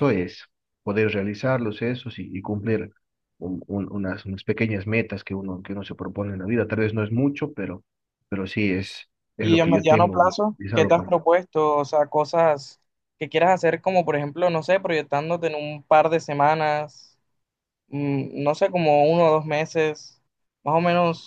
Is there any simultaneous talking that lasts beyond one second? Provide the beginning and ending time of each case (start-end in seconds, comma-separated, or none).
9.4-11.1